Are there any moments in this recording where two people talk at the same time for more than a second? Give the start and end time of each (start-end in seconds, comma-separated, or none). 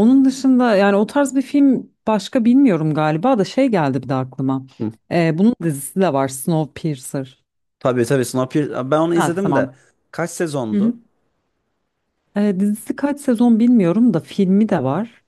none